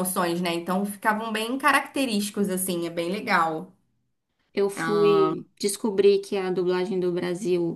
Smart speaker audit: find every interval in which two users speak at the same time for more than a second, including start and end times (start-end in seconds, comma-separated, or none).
none